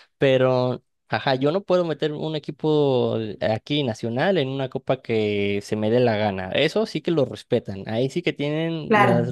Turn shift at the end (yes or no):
yes